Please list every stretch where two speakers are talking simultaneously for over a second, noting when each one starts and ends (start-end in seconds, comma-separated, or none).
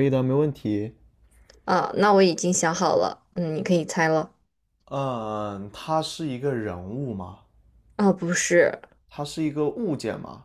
none